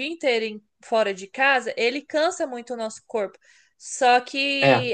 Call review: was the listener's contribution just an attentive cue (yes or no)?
yes